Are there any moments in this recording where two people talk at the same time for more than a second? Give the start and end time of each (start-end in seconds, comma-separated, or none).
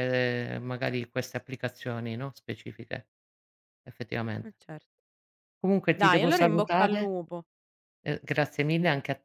5.9-7.1